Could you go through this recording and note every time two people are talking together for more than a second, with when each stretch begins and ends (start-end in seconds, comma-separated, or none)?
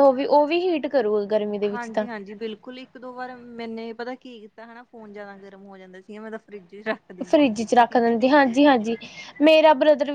none